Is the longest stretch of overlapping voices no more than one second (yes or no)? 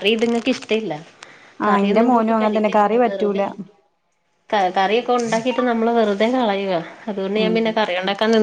no